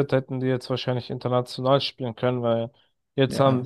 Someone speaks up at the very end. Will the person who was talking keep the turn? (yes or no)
yes